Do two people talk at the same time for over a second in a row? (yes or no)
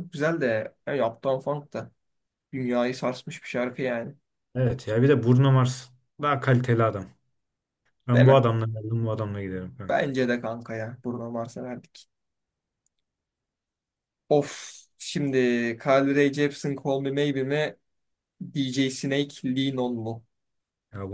no